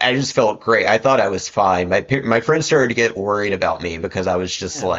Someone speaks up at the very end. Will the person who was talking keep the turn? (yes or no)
yes